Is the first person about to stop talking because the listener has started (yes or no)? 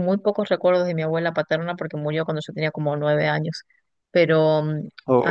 no